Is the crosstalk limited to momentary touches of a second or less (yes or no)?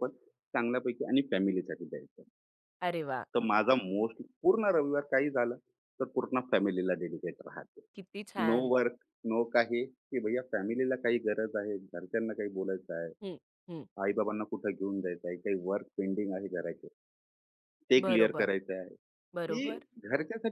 yes